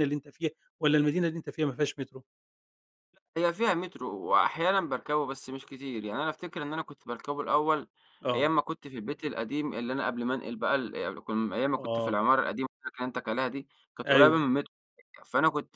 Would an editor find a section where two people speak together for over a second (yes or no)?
no